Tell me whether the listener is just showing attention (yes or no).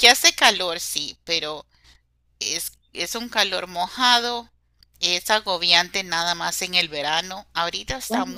yes